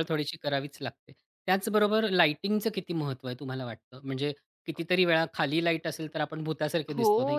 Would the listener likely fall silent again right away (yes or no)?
no